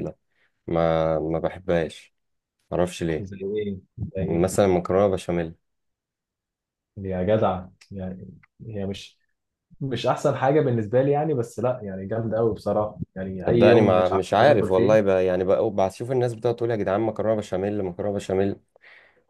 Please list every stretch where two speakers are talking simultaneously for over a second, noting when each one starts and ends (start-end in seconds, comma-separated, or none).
13.4-15.2